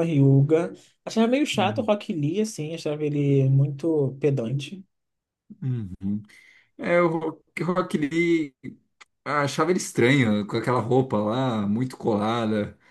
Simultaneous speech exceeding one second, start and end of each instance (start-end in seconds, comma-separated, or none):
none